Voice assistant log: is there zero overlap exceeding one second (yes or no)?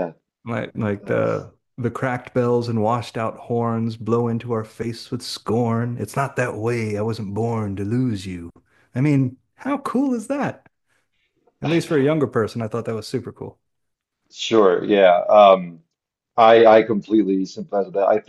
yes